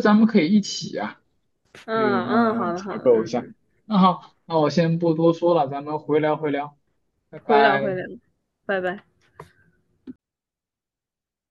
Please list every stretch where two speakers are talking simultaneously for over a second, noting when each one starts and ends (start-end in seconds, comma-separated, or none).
1.9-3.5